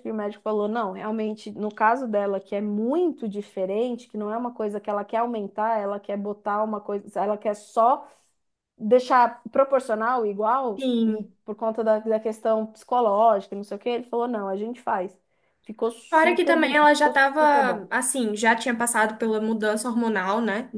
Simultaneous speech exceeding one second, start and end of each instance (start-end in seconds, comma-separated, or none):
16.1-17.9